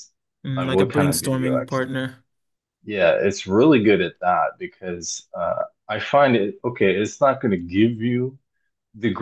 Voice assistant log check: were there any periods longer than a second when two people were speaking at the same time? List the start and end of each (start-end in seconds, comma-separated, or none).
0.6-1.9